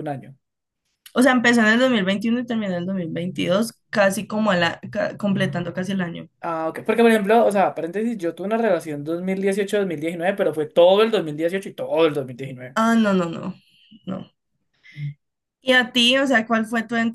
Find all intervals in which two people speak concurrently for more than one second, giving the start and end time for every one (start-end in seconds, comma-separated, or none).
none